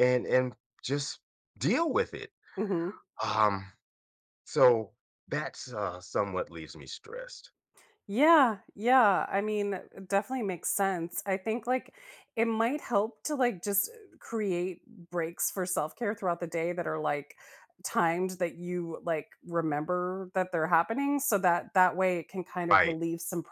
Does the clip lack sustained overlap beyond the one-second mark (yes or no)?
yes